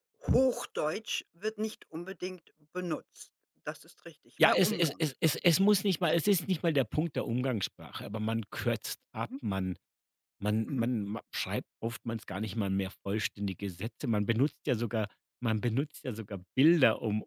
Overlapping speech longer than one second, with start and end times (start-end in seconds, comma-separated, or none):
4.4-6.2